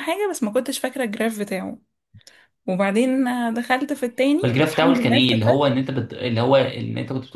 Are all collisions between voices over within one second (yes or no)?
no